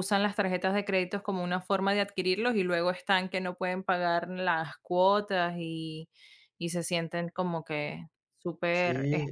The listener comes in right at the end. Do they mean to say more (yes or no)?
yes